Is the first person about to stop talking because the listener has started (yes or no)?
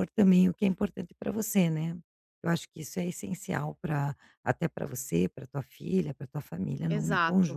yes